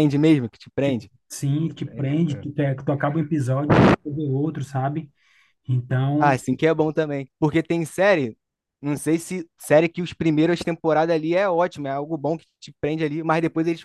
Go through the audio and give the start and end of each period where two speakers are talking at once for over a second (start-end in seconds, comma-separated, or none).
none